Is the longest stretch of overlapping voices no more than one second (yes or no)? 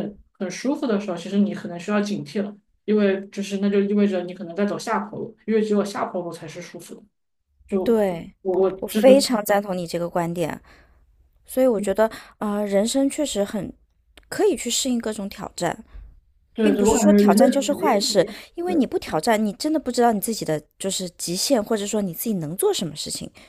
no